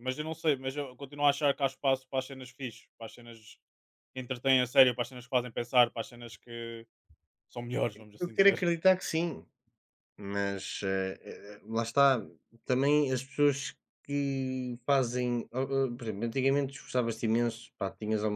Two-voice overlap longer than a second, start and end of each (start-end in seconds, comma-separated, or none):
none